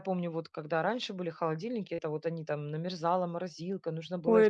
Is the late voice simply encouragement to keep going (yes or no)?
no